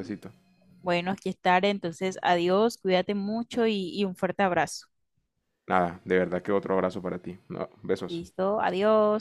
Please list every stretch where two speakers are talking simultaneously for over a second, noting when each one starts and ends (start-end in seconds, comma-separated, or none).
none